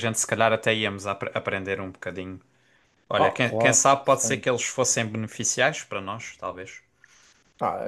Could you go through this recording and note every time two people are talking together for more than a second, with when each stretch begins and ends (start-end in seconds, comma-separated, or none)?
3.1-4.5